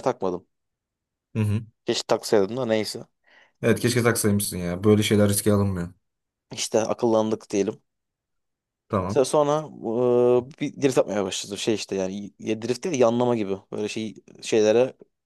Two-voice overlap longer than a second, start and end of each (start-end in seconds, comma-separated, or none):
none